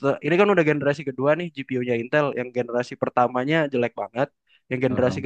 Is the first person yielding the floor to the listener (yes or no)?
no